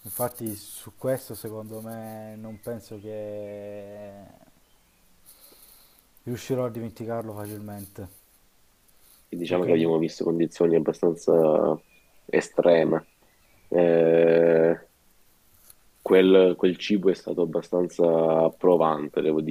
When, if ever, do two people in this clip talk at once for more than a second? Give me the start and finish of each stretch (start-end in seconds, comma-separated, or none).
none